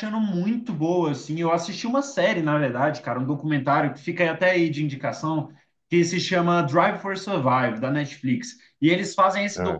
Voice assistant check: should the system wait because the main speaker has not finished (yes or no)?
yes